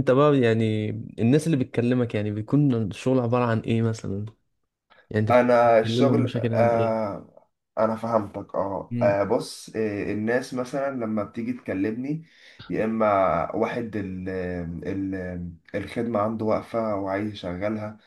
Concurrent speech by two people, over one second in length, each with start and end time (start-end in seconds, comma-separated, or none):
5.3-7.1